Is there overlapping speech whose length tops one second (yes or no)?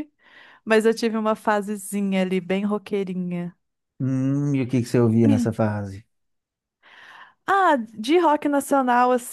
no